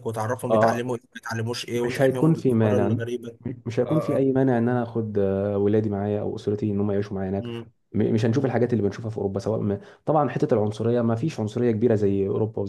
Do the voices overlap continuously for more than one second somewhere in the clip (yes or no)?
yes